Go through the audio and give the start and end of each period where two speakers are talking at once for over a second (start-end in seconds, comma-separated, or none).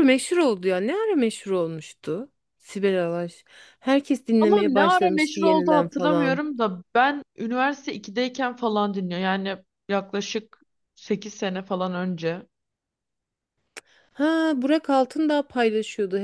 4.4-6.4